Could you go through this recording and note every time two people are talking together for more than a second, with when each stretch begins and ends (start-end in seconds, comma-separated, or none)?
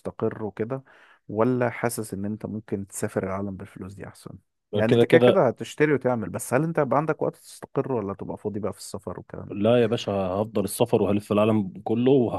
none